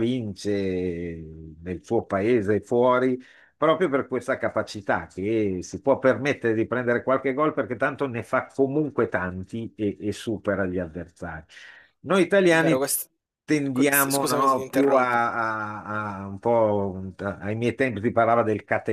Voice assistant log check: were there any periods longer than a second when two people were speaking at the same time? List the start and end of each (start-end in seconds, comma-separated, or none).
13.7-15.2